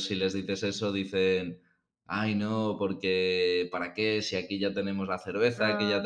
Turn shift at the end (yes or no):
no